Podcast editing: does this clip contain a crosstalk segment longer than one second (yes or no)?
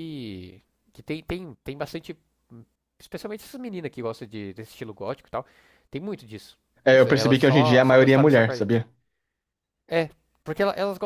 yes